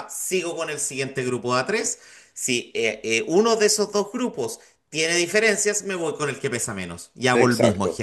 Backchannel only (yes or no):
no